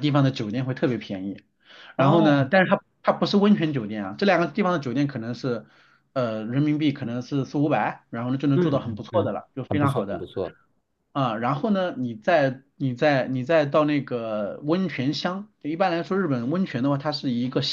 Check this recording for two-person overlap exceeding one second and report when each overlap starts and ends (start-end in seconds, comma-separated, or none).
8.5-10.3